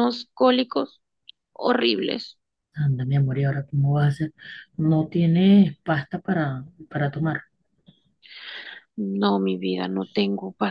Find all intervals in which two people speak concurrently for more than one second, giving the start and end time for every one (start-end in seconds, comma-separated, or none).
none